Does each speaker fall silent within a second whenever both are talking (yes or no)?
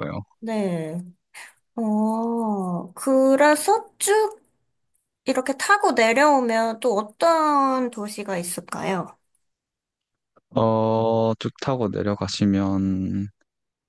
yes